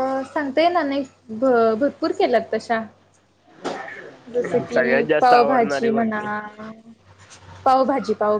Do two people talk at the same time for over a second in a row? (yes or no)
yes